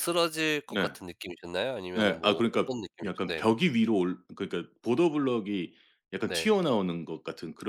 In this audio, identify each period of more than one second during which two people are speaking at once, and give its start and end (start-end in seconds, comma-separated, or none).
1.9-3.5